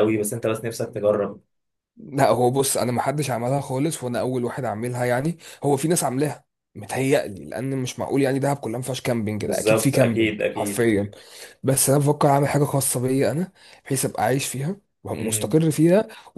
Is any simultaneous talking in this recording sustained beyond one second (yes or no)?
yes